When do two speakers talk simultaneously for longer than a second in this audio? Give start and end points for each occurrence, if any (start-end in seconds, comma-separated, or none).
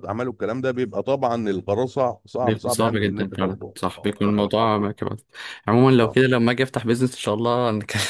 2.4-4.3